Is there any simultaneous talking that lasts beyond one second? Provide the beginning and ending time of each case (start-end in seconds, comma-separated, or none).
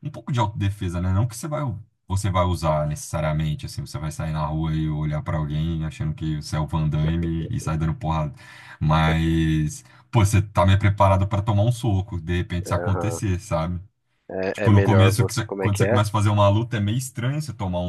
14.5-16.0